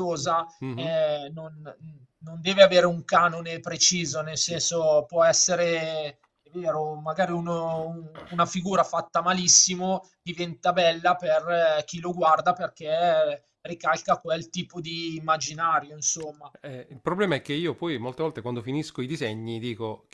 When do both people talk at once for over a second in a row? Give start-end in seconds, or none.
none